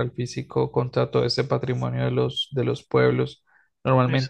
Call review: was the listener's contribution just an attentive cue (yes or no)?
yes